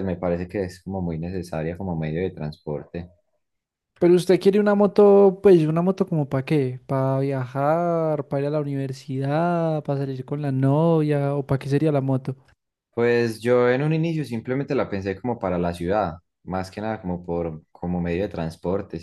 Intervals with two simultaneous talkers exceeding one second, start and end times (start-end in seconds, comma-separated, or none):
none